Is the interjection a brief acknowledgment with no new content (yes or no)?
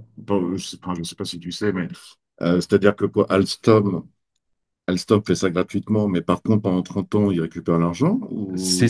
no